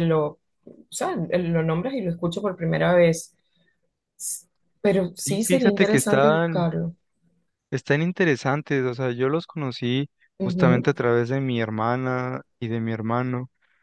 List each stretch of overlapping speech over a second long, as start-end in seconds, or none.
5.2-6.7